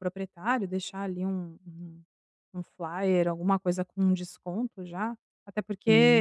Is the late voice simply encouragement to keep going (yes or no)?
yes